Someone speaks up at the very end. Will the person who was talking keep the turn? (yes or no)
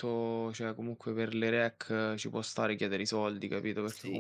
no